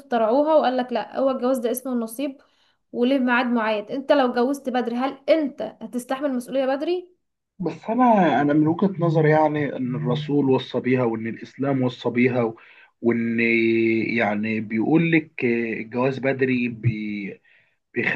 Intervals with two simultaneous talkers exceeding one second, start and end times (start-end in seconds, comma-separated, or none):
none